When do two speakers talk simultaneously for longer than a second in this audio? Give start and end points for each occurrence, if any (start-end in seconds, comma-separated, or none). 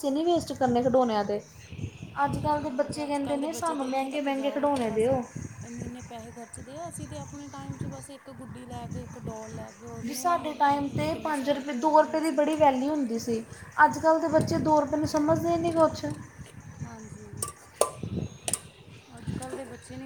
2.3-3.5, 10.2-12.4